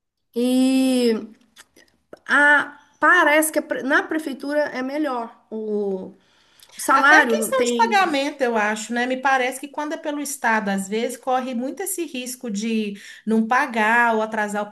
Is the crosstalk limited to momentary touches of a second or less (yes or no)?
no